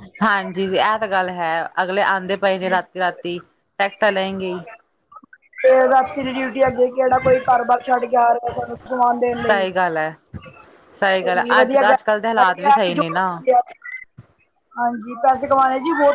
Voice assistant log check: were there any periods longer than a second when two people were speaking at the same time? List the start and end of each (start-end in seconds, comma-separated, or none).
11.2-13.0